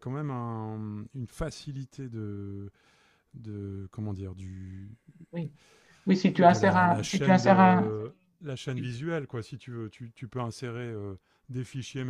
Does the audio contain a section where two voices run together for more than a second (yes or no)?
yes